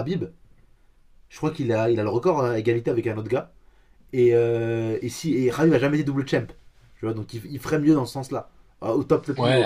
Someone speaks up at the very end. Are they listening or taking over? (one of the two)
taking over